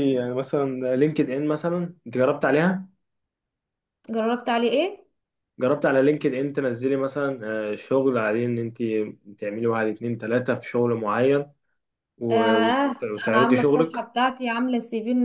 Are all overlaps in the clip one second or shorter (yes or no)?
no